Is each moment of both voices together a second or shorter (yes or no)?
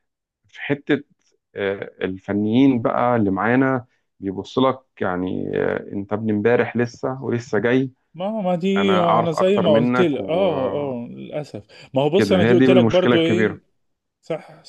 no